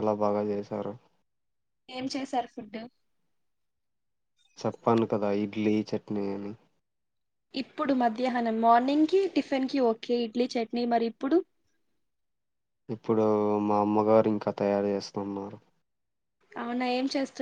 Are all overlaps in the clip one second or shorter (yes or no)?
yes